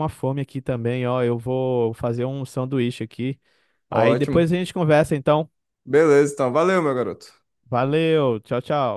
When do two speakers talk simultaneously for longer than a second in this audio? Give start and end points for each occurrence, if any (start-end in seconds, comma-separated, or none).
none